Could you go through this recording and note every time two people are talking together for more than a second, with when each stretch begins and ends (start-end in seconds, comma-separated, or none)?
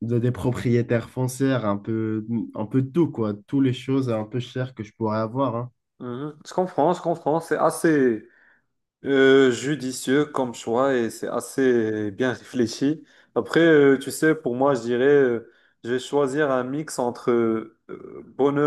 none